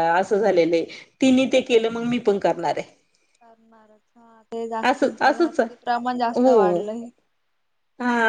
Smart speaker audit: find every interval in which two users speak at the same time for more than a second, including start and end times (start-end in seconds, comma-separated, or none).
4.9-6.8